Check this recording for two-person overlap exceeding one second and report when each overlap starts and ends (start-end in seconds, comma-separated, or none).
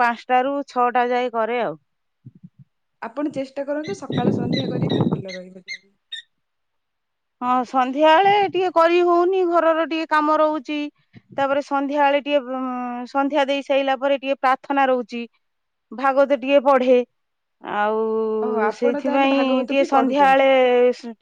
18.8-20.5